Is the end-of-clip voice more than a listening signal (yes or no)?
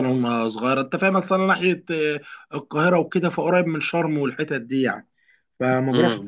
yes